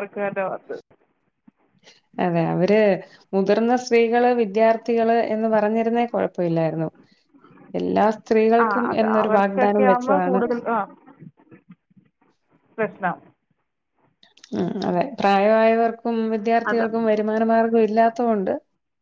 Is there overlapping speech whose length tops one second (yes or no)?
yes